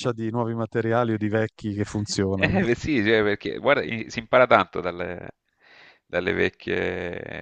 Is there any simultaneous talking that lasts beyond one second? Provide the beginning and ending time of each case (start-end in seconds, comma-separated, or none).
none